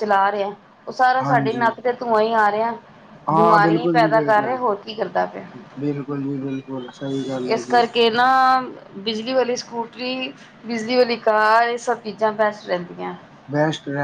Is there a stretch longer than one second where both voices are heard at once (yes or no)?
yes